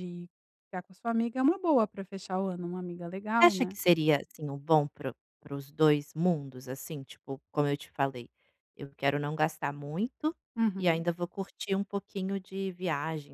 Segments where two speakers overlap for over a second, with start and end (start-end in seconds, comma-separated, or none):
none